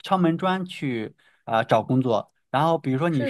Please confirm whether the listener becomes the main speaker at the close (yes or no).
no